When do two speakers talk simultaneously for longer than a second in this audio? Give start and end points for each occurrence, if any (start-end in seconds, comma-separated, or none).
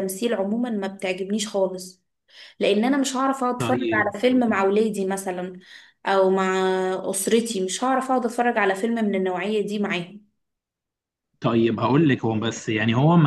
none